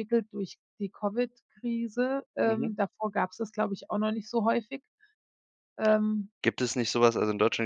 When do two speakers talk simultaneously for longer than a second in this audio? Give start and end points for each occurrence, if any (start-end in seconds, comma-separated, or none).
none